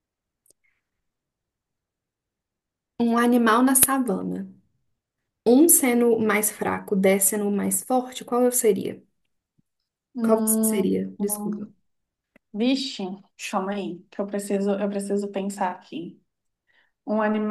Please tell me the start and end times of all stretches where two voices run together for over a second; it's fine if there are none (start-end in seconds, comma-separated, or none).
10.2-11.7